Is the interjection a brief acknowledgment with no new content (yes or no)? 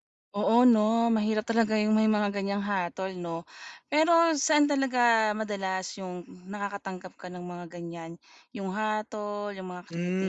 no